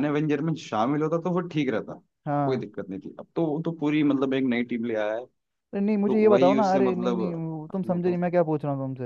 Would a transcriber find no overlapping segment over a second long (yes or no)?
no